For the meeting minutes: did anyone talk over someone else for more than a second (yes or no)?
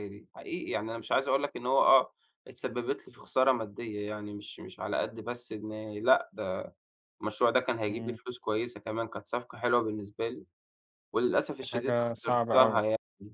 yes